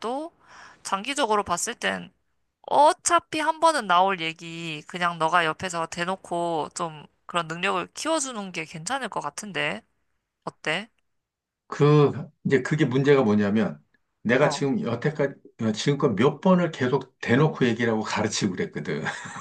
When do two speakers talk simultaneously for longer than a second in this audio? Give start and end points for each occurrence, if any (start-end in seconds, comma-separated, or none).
none